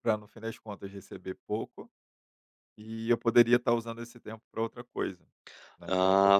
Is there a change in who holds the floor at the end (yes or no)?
yes